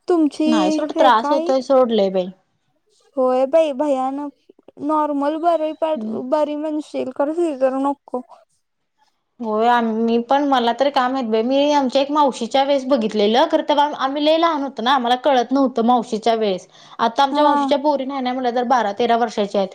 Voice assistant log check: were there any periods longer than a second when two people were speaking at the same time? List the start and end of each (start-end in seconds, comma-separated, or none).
none